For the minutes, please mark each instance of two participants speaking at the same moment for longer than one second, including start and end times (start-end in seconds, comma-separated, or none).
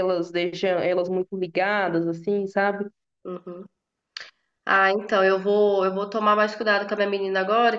none